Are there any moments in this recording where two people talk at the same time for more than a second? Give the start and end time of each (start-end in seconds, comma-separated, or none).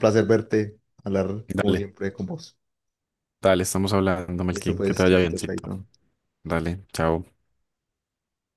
4.5-5.7